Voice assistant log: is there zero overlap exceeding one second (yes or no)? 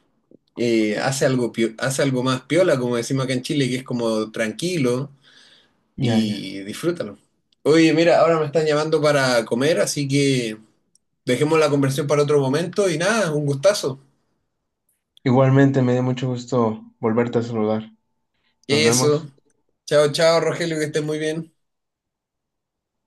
yes